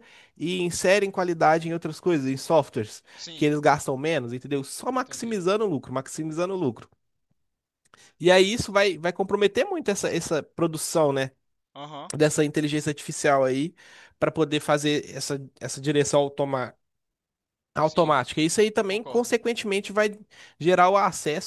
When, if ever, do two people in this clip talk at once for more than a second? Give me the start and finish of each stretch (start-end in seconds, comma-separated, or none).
none